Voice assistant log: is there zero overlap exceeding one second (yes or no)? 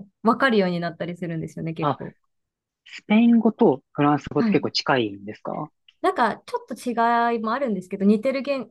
yes